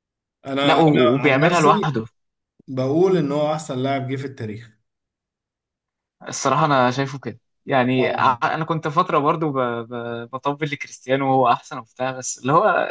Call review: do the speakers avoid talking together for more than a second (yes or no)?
no